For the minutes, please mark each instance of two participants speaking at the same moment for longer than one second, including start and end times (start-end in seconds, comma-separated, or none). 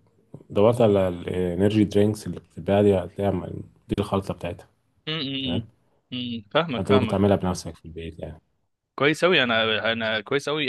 none